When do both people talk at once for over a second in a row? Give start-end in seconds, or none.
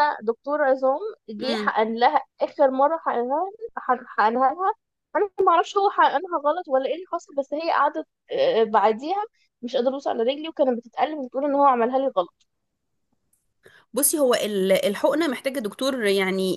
none